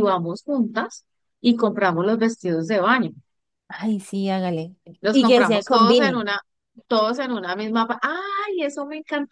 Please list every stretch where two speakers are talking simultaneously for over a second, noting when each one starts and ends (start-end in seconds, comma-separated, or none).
5.0-6.3